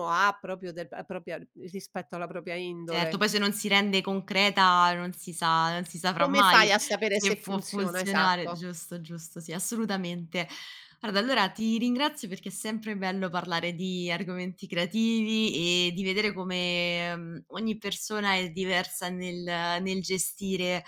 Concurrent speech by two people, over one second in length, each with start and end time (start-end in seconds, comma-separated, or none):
6.2-8.7